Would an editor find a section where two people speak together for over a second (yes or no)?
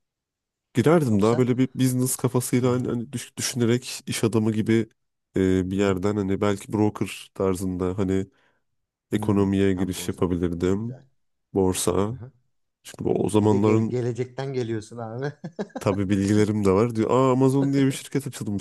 yes